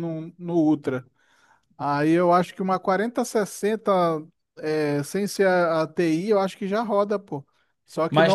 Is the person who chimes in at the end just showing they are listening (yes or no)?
no